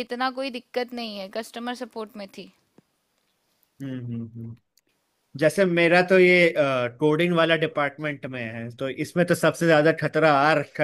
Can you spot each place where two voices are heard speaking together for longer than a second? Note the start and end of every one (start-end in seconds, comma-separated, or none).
none